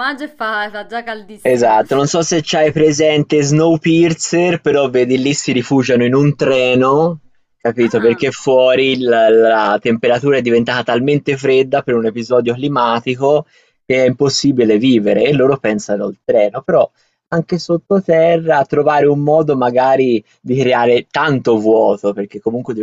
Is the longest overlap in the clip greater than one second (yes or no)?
no